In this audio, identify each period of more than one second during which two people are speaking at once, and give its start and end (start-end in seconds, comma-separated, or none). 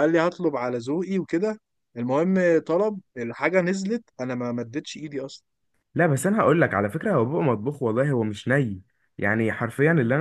none